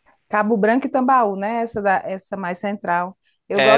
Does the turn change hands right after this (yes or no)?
yes